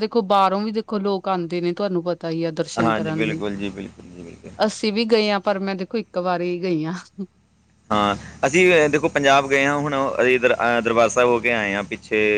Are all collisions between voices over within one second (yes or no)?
no